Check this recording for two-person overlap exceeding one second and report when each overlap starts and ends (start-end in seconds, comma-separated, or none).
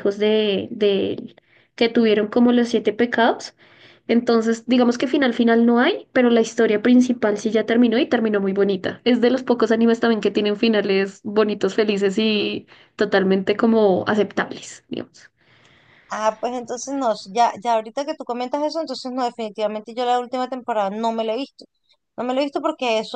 none